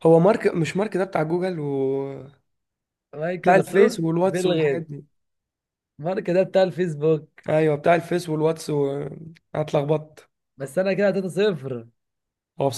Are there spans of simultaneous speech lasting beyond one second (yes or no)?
yes